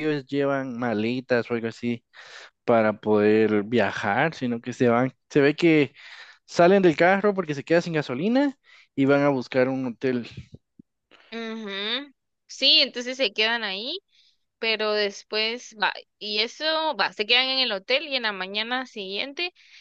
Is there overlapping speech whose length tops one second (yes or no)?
no